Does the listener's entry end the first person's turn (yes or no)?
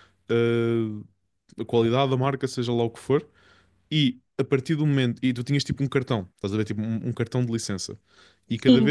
no